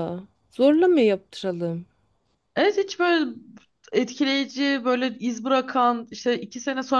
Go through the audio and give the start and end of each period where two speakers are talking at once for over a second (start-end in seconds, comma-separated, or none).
none